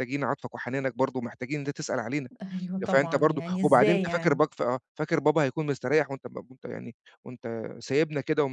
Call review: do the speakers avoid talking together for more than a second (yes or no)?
no